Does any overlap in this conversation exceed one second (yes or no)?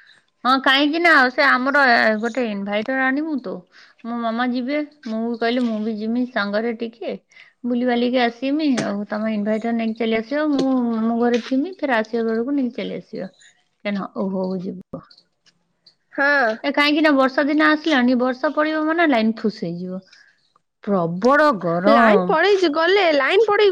no